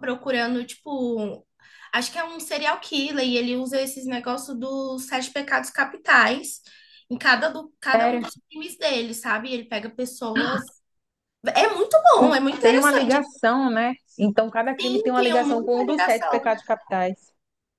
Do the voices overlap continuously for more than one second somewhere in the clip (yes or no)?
yes